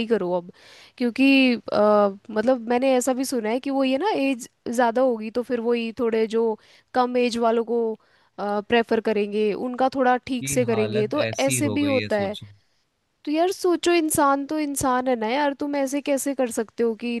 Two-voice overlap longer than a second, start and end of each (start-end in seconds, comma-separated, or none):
10.4-12.3